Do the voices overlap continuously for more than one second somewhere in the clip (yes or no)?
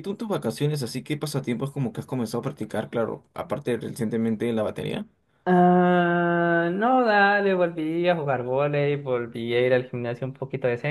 no